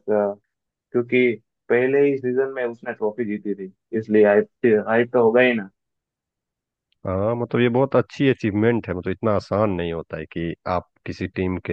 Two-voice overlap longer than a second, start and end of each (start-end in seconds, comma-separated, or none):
none